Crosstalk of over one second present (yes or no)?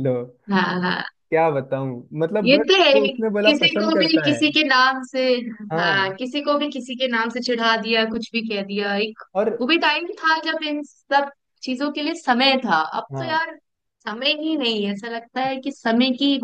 yes